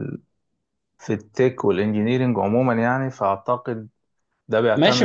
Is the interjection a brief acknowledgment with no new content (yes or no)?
no